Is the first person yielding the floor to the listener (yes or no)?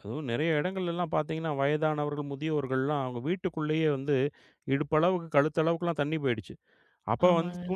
no